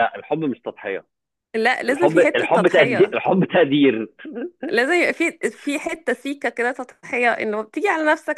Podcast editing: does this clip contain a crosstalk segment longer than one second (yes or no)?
yes